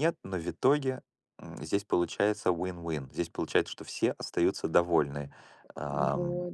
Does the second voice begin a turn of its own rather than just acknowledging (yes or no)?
no